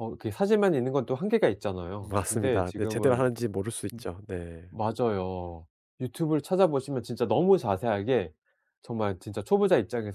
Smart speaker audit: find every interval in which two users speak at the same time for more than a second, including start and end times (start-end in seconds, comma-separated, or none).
2.0-3.2